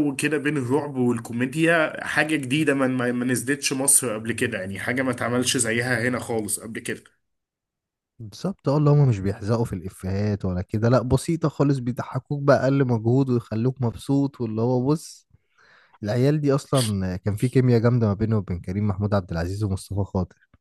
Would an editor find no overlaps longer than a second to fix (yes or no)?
yes